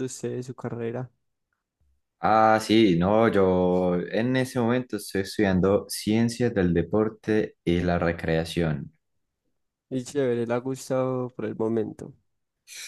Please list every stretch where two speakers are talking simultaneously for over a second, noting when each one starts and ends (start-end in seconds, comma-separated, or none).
none